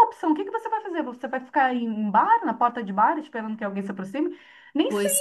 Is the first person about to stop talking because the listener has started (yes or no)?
no